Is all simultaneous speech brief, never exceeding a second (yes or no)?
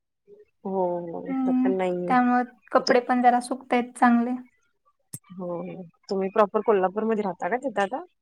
yes